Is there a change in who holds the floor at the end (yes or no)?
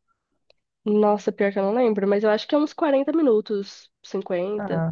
no